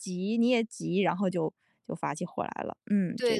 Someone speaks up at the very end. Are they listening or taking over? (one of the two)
taking over